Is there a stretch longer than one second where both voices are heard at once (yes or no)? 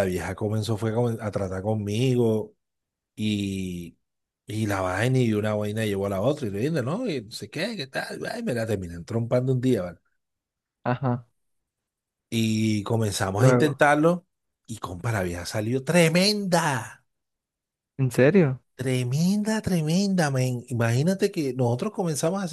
no